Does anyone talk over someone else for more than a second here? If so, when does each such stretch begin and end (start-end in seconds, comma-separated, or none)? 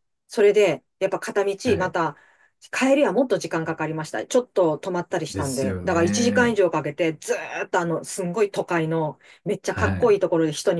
5.3-6.6